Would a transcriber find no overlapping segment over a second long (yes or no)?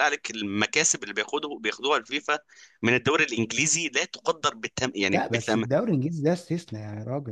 yes